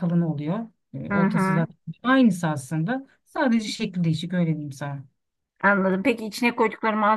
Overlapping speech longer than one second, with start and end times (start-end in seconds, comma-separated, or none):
none